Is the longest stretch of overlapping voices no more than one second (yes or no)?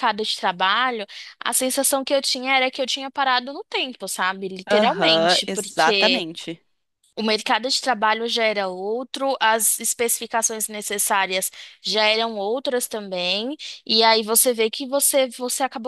no